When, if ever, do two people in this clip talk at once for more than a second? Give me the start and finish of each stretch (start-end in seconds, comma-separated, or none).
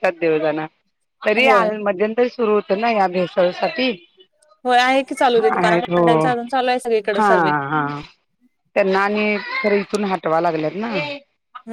none